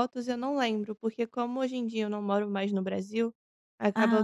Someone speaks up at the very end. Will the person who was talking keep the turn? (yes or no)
yes